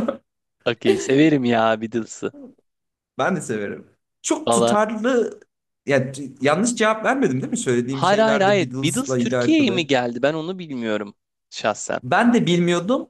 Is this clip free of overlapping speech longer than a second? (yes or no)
no